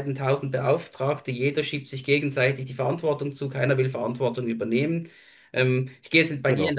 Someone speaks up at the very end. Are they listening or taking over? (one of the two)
listening